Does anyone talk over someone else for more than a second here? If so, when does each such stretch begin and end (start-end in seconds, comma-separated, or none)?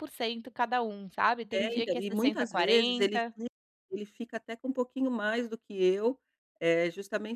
1.5-3.4